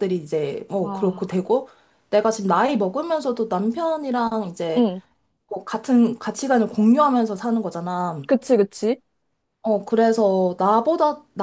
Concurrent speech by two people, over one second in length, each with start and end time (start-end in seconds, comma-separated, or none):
none